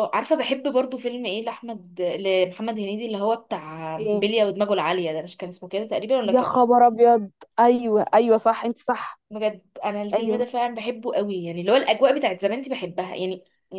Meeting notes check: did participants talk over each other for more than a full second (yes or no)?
no